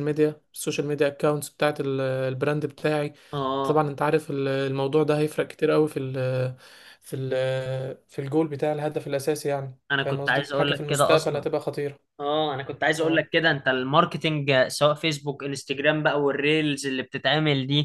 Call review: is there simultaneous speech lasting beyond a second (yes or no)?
yes